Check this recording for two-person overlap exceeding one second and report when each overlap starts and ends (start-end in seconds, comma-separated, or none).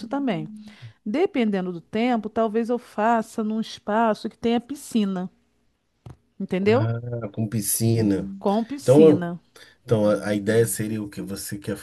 none